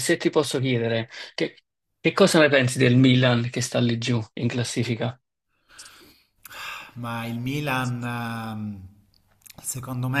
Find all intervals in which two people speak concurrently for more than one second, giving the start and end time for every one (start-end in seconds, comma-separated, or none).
none